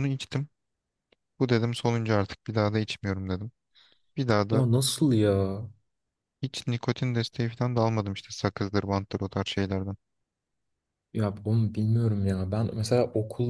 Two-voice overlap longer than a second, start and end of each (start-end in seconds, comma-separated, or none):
none